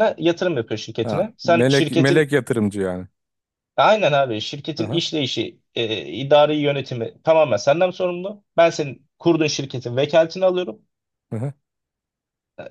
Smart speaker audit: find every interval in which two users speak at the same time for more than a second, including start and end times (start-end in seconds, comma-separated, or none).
1.0-2.3